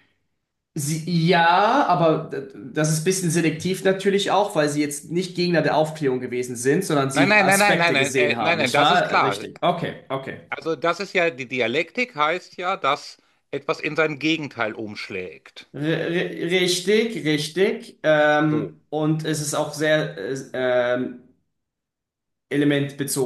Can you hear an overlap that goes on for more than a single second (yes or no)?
yes